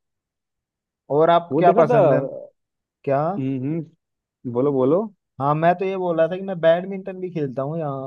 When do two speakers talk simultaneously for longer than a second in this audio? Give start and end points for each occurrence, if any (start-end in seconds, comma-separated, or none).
none